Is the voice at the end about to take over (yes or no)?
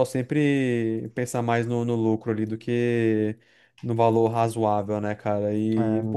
no